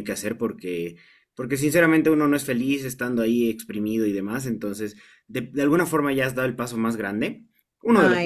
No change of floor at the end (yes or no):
yes